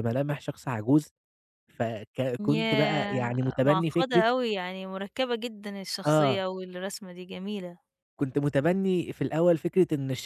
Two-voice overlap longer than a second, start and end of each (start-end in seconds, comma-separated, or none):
2.4-4.2